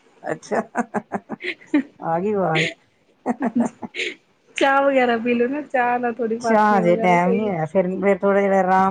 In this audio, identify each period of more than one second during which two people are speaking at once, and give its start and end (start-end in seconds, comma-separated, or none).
6.2-7.5